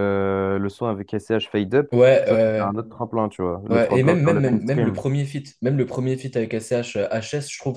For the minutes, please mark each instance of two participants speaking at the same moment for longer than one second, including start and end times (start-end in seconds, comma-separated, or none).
3.7-5.0